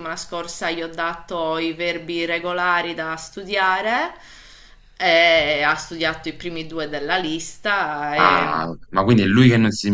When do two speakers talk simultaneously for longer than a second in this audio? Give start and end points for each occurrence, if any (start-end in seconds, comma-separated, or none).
none